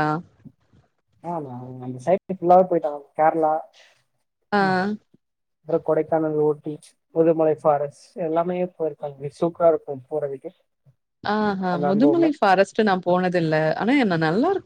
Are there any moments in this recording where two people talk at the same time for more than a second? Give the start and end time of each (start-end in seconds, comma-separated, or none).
none